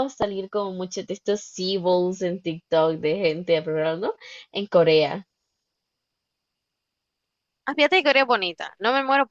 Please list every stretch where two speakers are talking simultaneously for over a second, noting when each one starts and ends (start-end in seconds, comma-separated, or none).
none